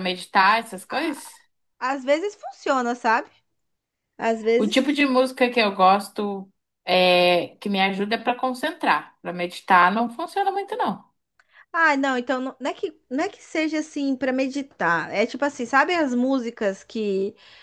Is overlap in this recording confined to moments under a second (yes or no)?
yes